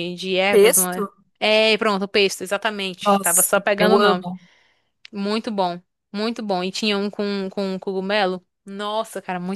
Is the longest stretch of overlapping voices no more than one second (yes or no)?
no